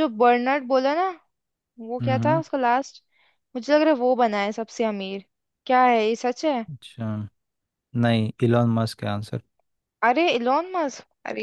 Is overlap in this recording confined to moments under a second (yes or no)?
yes